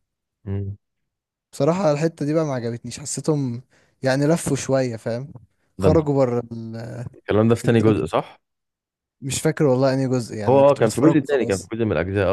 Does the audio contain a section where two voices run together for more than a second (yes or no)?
yes